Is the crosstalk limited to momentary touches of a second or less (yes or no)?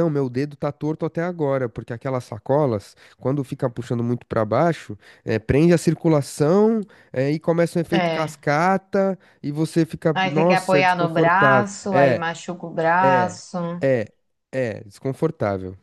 no